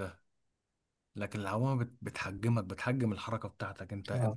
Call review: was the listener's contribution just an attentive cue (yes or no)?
yes